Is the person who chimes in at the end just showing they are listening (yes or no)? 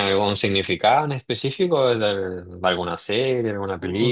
no